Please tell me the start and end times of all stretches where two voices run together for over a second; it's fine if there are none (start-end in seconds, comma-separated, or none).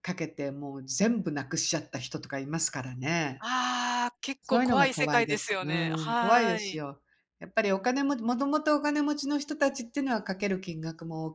4.5-6.8